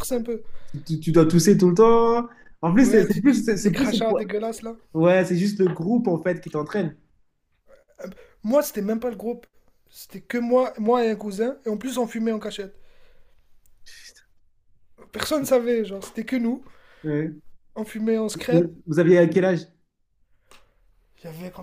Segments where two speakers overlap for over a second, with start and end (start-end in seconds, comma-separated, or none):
2.8-4.3